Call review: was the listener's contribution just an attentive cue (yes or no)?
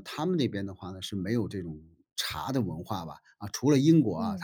yes